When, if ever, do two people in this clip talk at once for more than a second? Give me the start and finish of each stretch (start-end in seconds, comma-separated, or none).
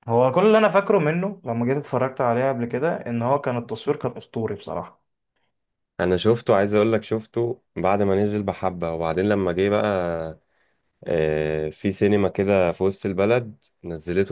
none